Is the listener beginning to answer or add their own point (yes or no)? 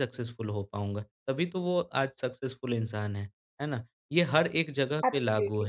no